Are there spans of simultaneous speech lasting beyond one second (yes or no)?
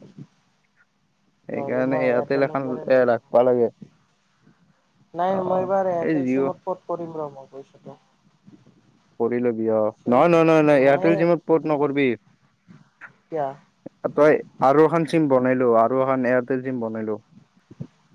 yes